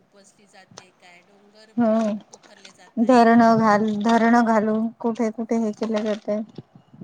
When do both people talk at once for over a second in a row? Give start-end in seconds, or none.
none